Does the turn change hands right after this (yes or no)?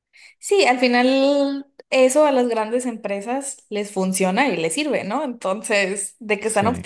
no